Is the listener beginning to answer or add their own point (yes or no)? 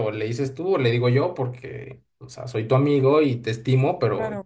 no